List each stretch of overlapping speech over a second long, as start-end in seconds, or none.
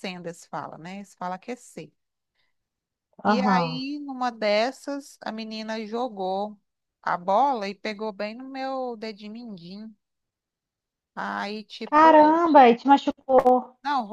none